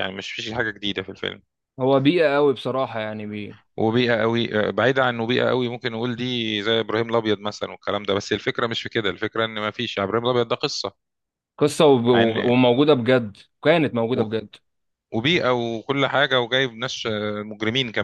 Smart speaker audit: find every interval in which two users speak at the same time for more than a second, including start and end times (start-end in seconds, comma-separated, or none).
none